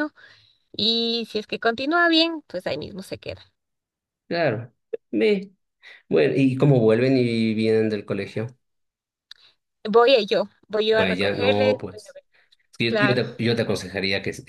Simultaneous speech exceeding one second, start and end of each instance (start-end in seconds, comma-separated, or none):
10.9-12.2